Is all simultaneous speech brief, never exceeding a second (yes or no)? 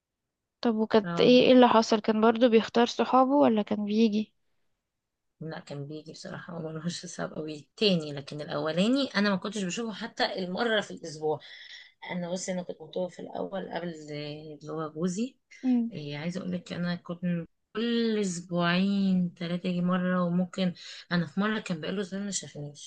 yes